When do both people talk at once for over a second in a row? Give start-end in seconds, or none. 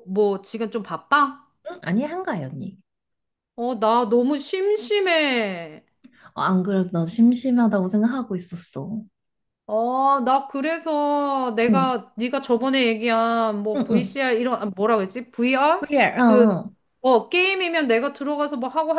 none